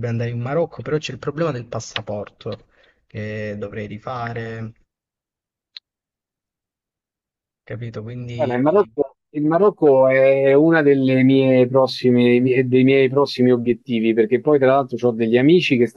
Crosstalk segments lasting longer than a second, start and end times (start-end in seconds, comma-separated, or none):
none